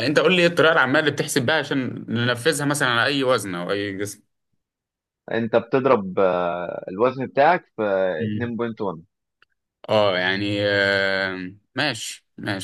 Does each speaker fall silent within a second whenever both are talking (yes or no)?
yes